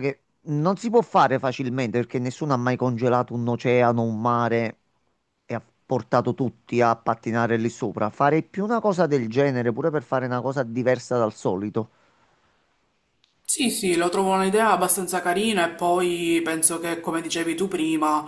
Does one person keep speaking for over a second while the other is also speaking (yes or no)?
no